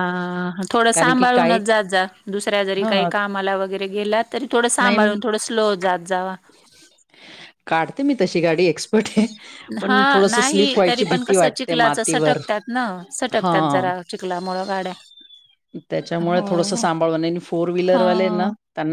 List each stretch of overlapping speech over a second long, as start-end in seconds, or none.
9.9-12.0